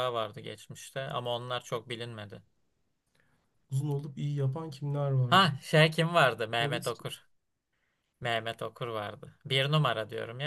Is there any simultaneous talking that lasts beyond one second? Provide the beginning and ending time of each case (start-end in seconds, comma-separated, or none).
none